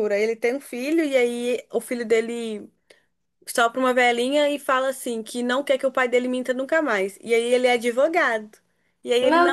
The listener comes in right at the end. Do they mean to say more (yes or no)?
no